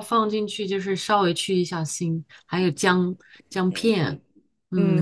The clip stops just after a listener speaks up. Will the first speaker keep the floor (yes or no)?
no